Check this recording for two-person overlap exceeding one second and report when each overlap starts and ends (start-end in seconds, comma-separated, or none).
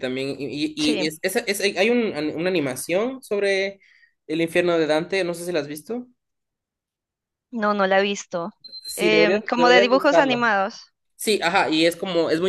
8.9-10.4